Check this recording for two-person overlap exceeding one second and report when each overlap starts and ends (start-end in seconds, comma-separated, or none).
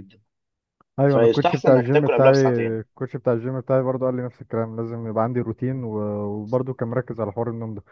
1.1-2.3